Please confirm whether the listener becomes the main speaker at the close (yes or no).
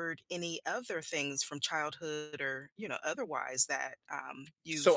yes